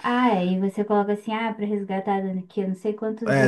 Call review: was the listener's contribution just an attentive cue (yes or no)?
no